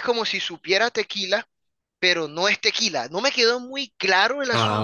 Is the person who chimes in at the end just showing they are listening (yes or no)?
yes